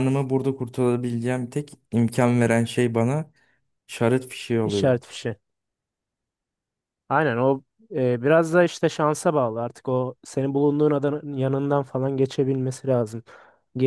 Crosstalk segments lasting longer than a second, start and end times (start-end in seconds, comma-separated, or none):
none